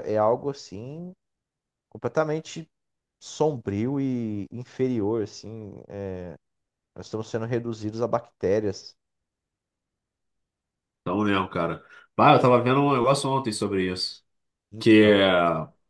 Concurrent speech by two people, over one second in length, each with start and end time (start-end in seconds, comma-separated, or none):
none